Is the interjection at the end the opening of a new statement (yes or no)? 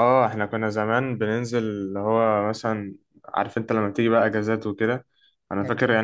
no